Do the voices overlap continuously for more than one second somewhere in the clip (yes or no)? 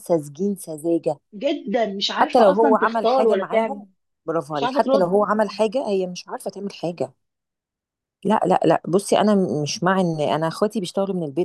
yes